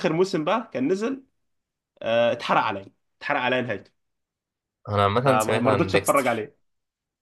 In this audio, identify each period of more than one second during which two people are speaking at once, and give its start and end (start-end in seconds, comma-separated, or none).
5.2-6.5